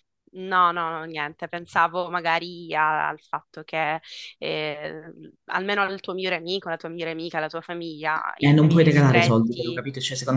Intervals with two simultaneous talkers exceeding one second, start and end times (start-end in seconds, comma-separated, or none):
8.4-9.8